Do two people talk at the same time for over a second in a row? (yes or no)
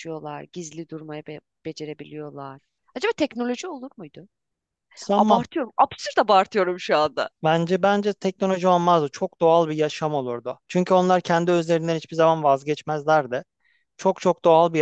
no